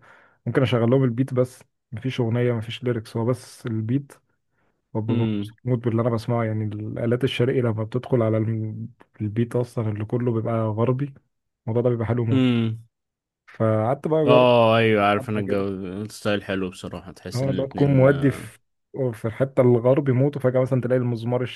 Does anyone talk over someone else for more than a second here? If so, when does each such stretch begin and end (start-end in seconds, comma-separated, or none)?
17.3-18.6